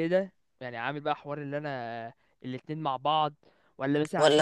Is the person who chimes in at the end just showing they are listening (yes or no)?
yes